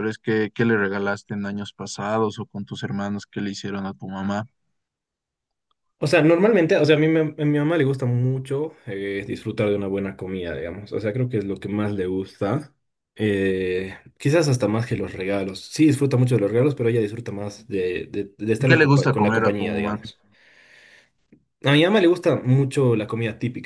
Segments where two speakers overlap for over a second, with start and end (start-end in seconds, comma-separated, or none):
18.6-20.0